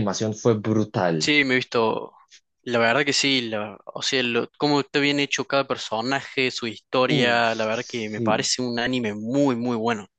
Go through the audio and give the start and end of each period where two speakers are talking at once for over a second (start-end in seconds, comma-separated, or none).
7.0-8.5